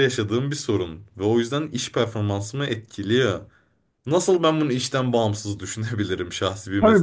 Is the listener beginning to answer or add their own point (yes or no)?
yes